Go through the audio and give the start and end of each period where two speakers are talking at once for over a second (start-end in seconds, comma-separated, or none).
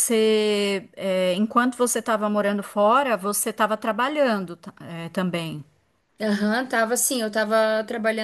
none